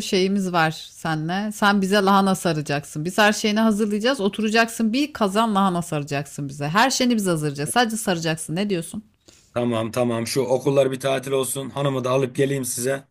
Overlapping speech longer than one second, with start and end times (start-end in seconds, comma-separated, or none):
none